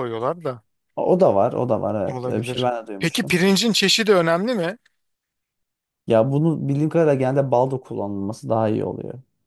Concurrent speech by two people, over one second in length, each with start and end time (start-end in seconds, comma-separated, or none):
2.1-3.4